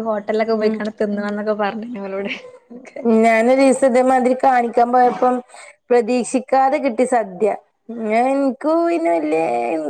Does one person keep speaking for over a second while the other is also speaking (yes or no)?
no